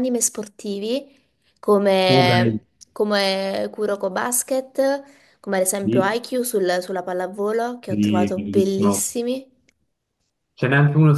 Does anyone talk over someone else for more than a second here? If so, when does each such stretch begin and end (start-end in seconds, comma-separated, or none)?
7.9-9.1